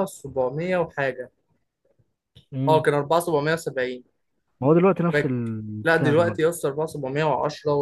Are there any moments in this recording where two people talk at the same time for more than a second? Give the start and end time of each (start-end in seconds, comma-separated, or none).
5.1-6.5